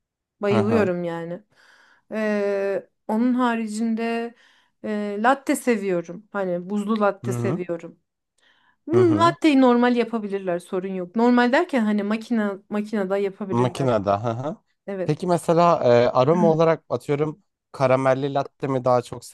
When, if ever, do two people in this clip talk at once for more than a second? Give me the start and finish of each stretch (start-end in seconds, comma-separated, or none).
none